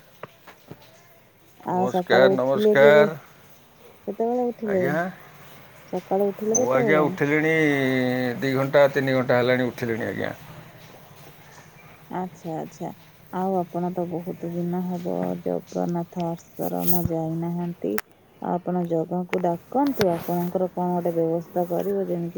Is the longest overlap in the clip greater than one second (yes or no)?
yes